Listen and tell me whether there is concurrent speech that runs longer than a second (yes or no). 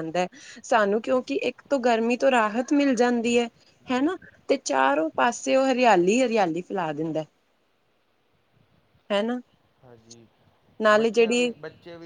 no